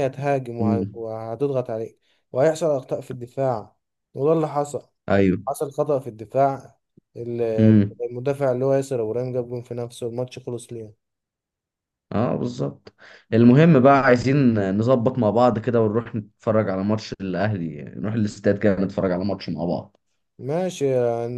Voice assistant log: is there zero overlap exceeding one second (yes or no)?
yes